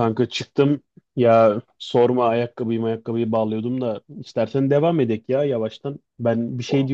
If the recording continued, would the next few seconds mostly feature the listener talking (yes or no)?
no